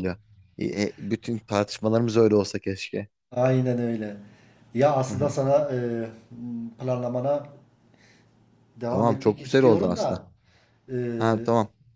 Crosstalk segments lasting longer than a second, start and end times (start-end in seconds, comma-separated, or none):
8.9-10.2